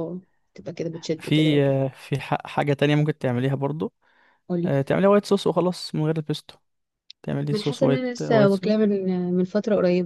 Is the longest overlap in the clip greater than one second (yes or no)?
yes